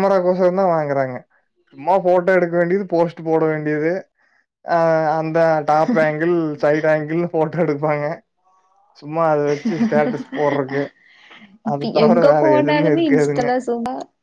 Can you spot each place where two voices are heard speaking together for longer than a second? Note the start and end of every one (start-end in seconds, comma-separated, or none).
11.7-13.4